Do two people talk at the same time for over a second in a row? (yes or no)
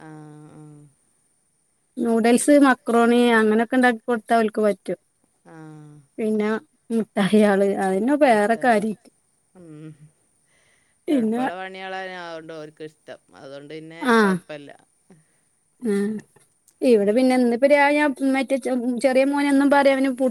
no